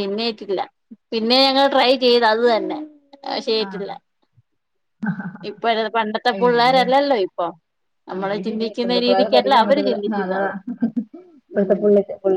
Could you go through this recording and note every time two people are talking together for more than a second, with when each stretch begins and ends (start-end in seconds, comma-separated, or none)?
8.1-10.4